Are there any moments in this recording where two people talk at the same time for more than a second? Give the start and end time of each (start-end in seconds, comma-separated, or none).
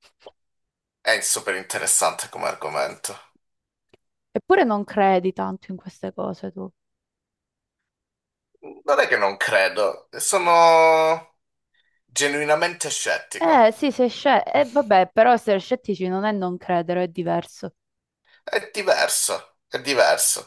none